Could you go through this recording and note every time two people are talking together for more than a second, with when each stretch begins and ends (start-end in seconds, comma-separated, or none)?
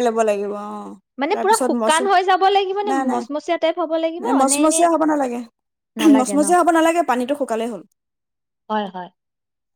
2.9-4.8